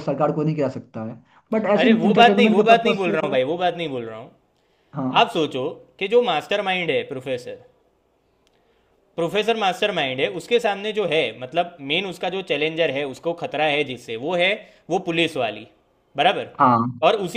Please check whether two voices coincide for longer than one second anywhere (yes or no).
yes